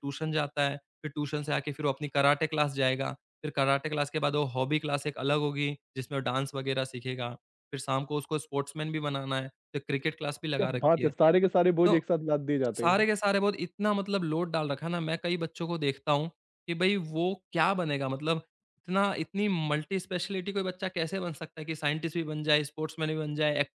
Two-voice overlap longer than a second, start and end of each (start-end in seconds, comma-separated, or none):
none